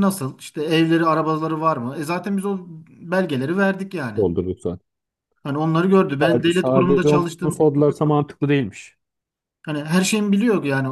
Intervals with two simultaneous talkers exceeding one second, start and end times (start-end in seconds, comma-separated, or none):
6.2-7.7